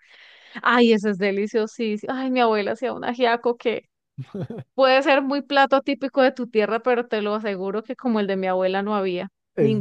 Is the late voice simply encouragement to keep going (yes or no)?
no